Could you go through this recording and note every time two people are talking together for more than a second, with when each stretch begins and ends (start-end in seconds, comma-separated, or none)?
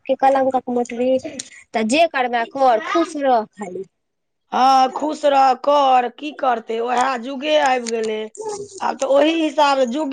none